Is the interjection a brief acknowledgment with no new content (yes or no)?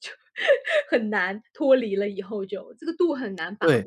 no